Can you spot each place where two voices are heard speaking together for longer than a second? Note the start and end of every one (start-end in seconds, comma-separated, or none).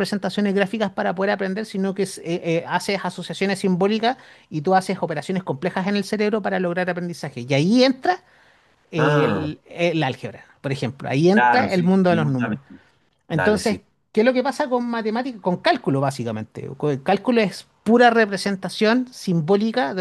11.3-12.6